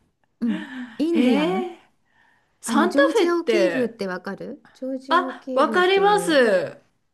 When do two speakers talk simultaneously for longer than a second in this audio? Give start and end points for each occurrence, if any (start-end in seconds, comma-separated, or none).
2.6-3.9, 5.1-6.5